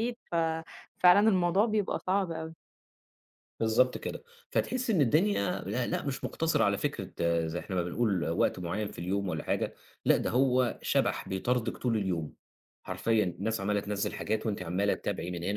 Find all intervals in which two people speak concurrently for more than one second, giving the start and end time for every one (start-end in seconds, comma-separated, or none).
none